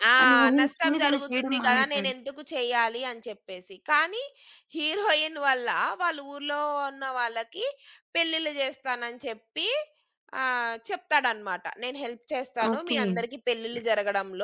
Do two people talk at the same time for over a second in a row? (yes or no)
yes